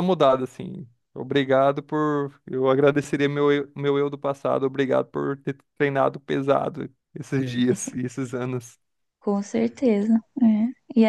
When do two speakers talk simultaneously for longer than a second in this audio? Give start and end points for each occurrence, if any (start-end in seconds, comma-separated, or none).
none